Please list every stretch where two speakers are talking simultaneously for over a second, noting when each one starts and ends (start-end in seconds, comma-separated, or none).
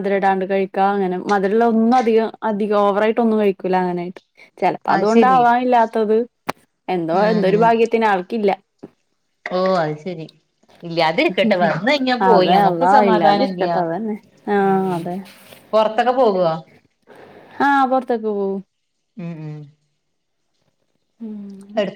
12.3-13.8